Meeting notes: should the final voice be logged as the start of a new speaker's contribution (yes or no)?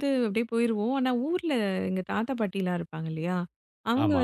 no